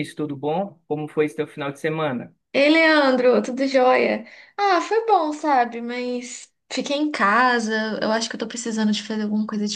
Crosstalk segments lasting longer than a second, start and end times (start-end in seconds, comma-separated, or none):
none